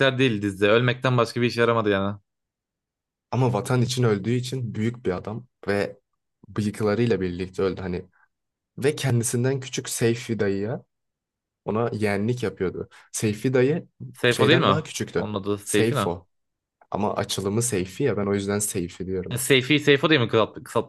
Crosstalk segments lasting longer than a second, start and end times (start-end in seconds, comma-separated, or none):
14.3-16.1